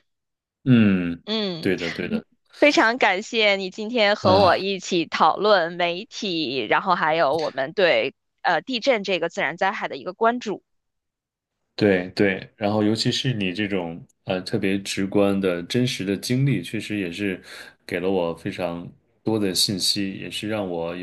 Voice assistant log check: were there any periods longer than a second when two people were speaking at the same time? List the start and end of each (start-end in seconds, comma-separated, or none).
none